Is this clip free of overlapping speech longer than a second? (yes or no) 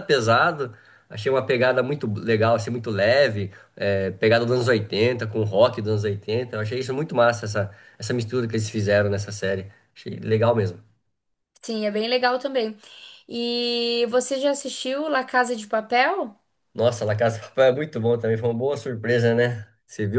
yes